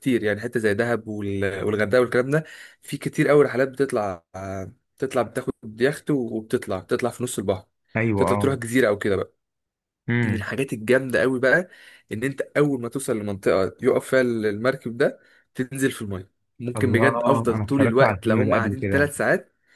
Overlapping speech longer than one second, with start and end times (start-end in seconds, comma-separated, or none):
16.8-19.1